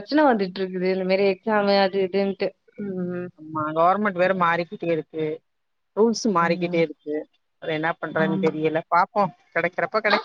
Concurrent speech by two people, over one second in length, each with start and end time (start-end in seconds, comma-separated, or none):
none